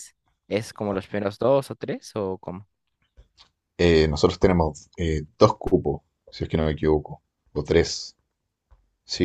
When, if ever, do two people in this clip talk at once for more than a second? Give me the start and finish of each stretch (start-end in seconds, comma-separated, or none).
none